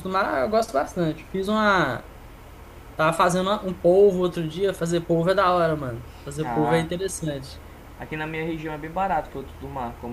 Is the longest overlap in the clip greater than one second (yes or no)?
no